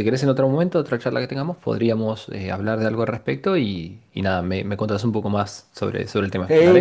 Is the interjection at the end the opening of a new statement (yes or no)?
yes